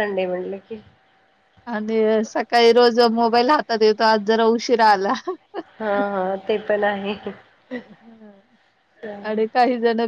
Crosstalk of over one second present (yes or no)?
no